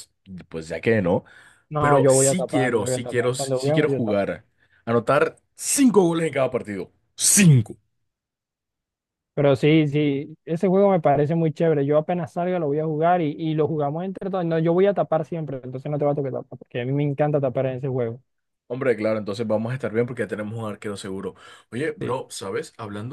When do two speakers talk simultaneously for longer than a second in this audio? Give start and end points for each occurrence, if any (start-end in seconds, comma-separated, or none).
1.8-4.2